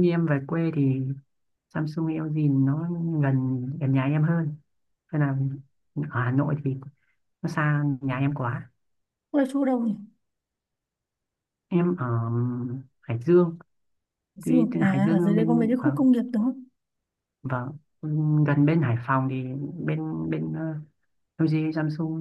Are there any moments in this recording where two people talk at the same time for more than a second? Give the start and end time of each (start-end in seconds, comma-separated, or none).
14.4-16.0